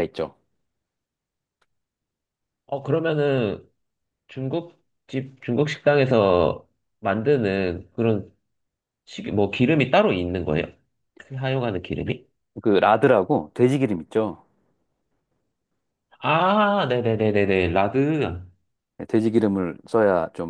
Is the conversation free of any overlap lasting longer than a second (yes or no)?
yes